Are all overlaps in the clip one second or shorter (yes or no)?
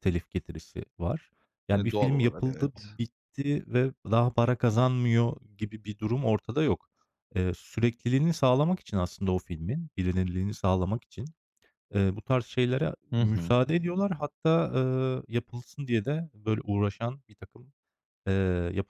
no